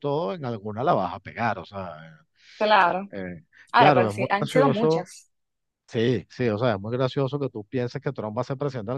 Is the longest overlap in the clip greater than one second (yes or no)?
yes